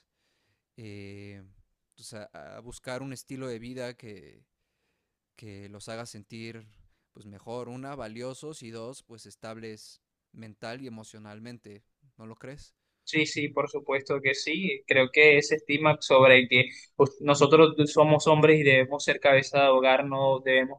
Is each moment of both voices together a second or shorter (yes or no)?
yes